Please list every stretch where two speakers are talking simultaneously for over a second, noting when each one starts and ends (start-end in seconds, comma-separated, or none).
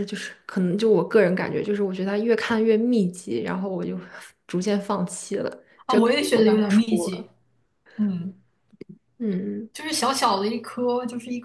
5.9-7.3